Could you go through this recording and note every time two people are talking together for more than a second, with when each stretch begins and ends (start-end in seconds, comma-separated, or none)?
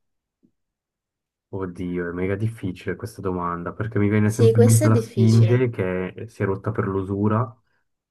4.2-5.7